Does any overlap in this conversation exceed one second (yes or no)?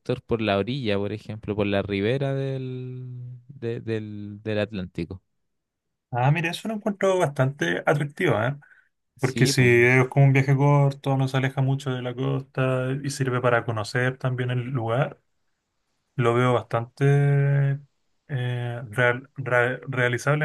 no